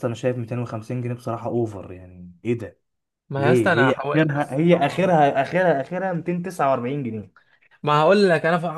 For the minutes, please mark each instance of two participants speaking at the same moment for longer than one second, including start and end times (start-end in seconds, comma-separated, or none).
3.4-5.1